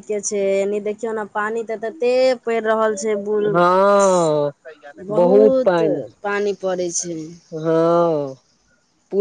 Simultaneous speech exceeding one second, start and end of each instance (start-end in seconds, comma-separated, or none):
none